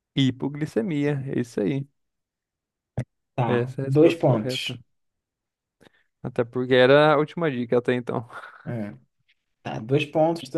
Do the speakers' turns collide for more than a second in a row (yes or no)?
yes